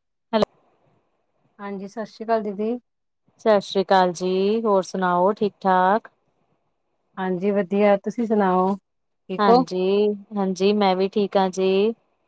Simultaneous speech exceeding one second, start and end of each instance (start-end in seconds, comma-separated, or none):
none